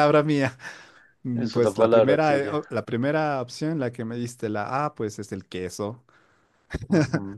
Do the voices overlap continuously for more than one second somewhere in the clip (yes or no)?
yes